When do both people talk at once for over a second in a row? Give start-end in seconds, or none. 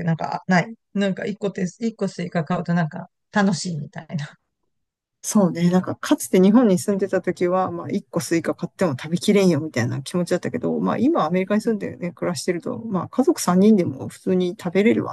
none